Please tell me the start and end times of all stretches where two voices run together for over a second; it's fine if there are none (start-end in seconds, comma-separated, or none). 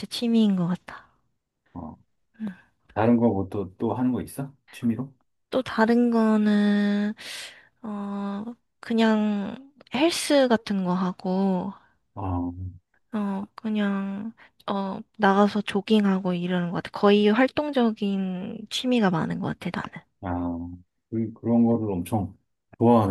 none